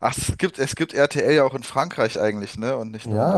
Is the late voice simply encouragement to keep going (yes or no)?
no